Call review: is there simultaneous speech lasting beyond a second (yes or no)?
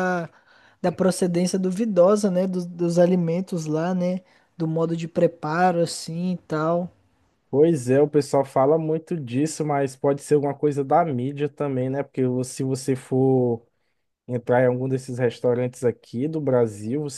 no